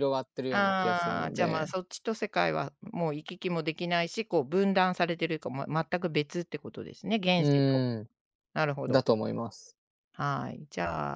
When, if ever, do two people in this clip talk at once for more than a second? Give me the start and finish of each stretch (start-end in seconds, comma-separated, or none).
0.5-1.7